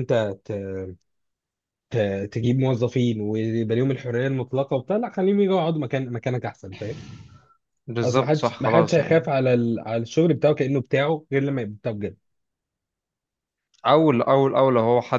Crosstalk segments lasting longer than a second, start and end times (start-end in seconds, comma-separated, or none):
8.0-9.4